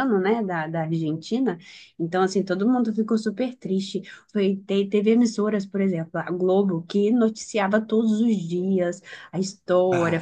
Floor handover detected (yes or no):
no